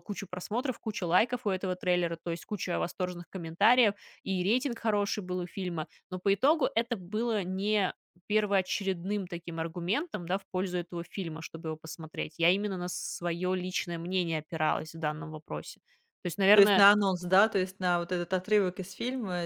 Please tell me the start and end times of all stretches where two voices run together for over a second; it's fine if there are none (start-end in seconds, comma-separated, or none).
none